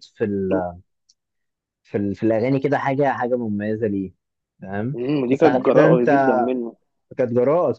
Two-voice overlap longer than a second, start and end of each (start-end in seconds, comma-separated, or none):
4.9-6.4